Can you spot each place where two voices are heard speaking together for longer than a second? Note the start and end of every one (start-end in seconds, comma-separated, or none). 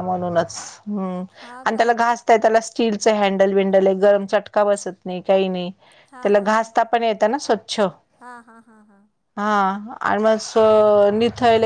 none